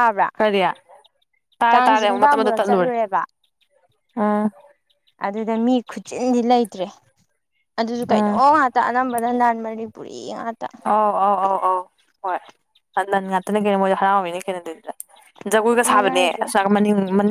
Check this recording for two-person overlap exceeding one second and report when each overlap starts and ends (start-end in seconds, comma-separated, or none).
1.7-2.9